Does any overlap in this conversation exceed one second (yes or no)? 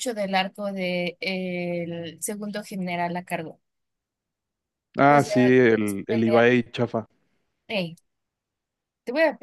yes